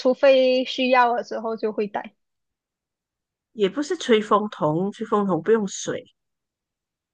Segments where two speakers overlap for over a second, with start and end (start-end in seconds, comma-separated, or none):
none